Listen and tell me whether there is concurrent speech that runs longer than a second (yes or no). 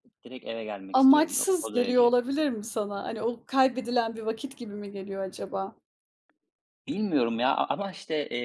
yes